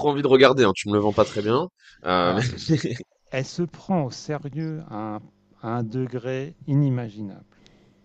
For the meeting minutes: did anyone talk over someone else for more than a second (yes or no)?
no